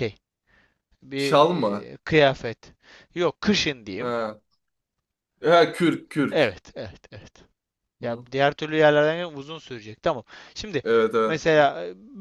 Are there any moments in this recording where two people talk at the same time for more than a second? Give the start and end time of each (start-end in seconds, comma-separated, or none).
none